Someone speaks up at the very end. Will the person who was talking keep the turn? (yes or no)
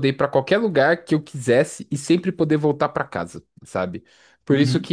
yes